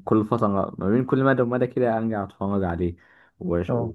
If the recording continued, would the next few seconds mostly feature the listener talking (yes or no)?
no